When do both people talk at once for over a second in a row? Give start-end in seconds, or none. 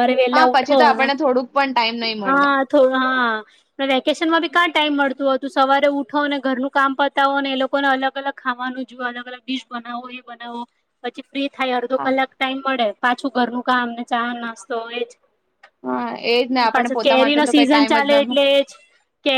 16.7-18.3